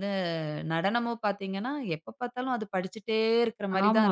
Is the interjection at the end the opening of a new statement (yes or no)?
yes